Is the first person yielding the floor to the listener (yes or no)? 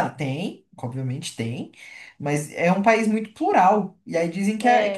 no